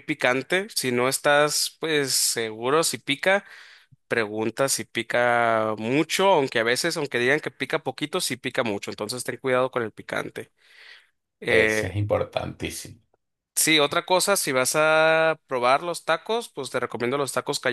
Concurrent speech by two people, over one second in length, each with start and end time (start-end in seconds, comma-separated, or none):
none